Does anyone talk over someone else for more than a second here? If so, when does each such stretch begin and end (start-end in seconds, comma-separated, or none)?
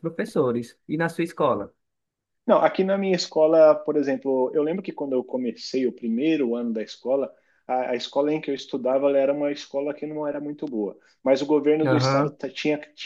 none